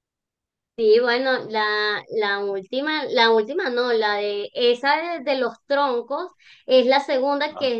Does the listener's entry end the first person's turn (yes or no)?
no